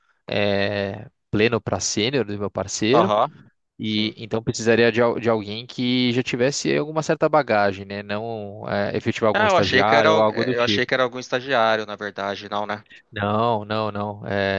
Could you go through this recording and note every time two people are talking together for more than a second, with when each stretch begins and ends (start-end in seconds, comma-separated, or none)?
9.3-10.9